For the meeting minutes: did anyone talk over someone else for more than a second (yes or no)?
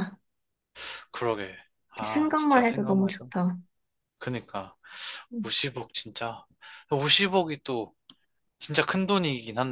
yes